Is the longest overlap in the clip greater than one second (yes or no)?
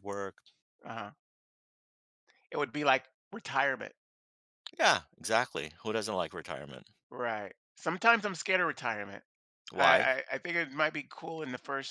no